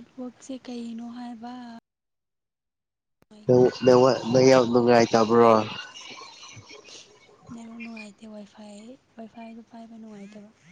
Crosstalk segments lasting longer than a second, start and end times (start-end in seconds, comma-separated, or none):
none